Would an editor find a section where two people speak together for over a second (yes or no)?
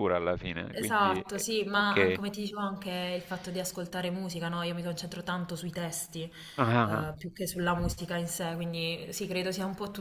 yes